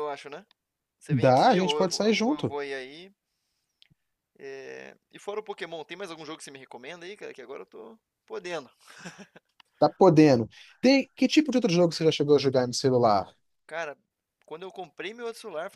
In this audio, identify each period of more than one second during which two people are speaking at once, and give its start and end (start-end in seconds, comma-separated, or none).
1.1-2.5